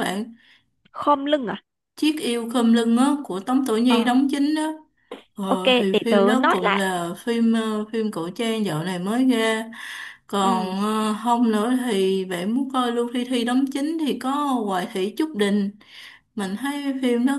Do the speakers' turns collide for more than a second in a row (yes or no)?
yes